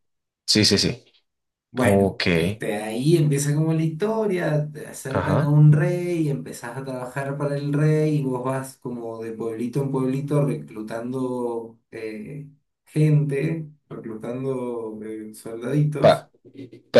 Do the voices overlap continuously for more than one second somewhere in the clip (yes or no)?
no